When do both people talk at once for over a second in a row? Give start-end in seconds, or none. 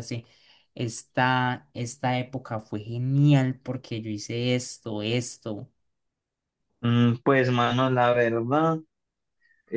none